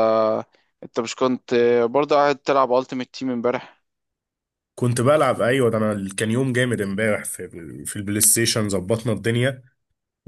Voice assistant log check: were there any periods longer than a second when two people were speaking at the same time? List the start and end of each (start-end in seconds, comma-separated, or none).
none